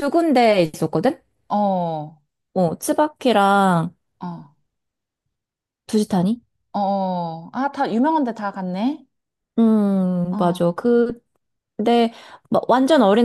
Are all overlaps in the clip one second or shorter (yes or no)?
yes